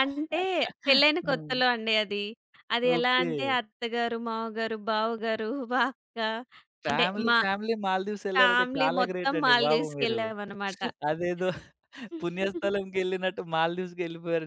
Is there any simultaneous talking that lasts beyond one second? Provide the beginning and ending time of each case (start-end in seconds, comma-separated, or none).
8.3-10.2